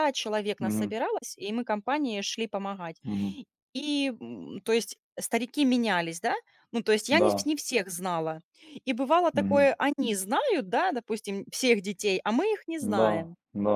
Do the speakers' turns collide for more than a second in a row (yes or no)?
no